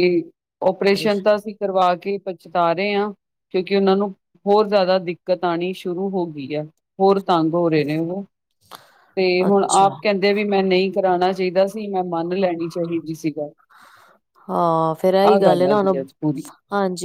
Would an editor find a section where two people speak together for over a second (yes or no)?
no